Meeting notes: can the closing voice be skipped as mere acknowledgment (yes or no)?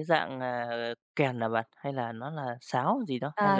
no